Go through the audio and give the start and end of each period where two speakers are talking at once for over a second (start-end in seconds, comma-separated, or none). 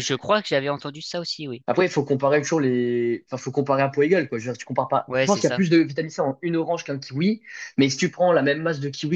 none